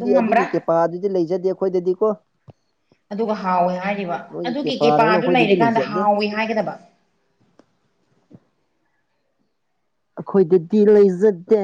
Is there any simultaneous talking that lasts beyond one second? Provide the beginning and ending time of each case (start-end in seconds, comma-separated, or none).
4.3-6.0